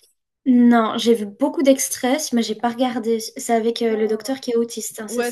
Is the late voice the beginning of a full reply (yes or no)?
yes